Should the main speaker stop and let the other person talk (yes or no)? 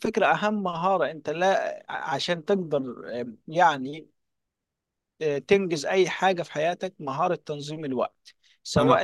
no